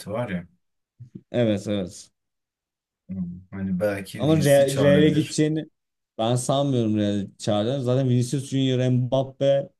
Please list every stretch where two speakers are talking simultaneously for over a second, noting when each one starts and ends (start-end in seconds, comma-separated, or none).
4.2-5.4